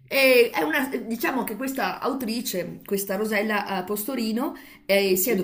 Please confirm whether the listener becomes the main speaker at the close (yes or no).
no